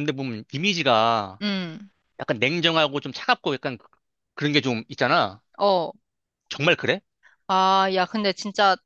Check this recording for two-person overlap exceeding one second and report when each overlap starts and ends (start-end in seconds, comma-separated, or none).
none